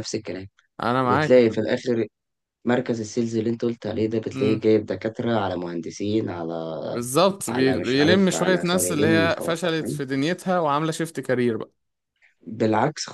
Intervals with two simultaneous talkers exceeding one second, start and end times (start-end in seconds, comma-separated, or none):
7.5-10.0